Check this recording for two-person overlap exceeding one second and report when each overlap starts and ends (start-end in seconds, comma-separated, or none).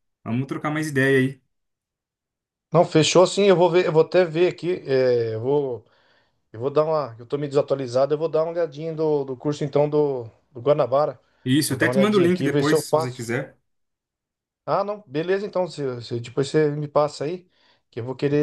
11.7-13.3